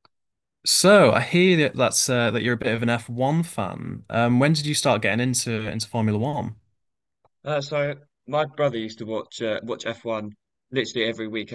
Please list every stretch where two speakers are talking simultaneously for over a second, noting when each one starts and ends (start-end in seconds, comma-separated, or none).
none